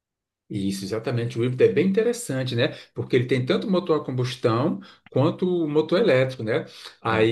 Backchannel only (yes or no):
yes